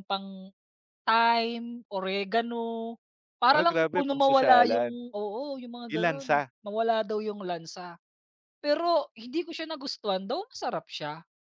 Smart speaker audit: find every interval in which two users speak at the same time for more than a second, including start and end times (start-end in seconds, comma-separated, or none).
3.5-5.0